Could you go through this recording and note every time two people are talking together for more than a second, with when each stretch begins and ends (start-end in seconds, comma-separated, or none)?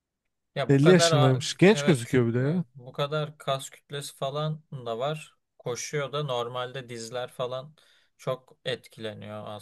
0.7-2.6